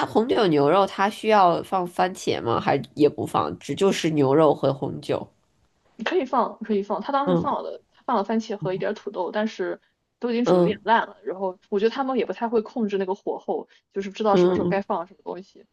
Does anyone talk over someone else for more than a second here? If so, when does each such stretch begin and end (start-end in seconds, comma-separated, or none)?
none